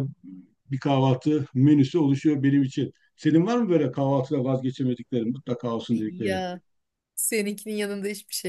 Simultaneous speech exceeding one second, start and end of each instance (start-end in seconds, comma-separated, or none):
none